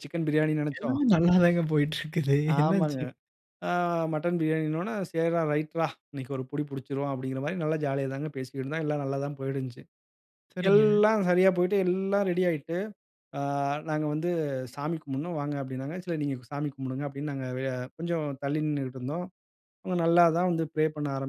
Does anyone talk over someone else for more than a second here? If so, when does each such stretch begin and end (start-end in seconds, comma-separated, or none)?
none